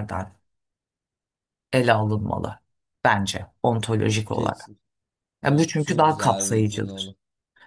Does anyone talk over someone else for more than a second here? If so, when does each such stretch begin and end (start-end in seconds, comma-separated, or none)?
5.5-7.2